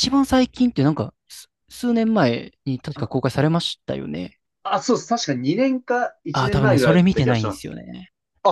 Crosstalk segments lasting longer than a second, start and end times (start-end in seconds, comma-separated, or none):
6.3-7.7